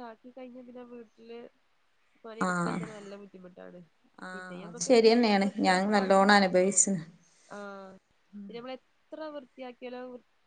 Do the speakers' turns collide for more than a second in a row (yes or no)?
yes